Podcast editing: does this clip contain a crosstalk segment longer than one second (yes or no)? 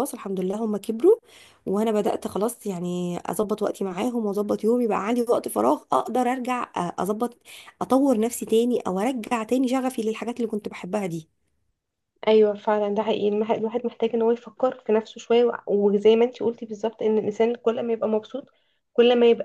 no